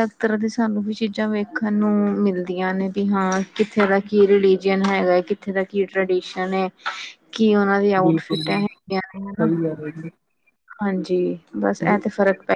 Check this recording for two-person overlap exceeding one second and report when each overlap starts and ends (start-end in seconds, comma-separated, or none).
none